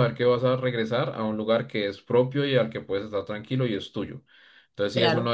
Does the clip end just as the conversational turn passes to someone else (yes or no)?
no